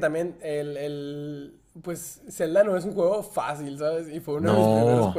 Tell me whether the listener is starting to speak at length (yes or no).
no